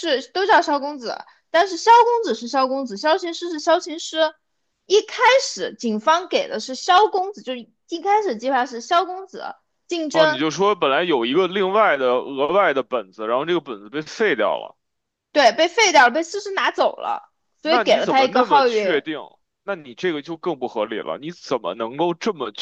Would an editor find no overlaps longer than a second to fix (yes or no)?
no